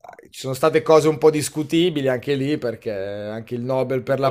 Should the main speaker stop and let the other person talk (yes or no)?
yes